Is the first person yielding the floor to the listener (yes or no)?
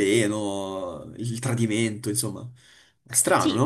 yes